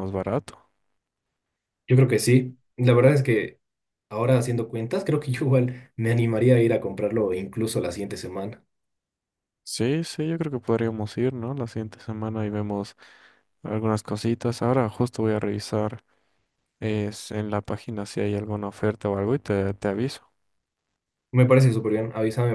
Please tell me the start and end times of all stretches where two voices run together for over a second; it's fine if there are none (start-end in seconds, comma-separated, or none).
none